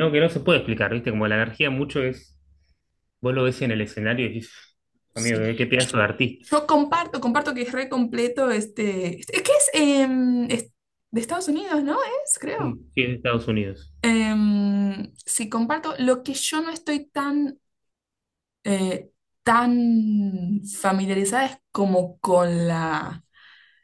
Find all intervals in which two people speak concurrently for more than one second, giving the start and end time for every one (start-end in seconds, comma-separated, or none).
none